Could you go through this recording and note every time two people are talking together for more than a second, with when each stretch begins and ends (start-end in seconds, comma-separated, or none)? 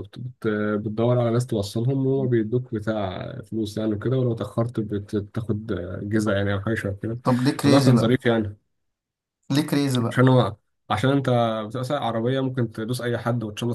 none